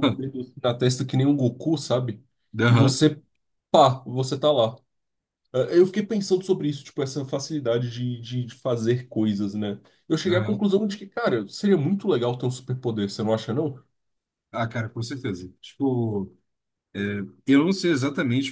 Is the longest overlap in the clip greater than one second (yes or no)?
no